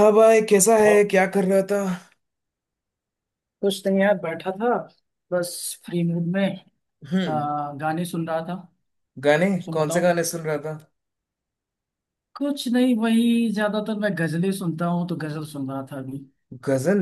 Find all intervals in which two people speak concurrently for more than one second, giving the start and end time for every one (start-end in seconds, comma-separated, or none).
none